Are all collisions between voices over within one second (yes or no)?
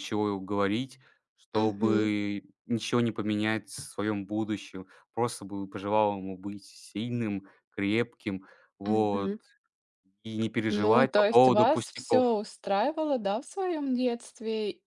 no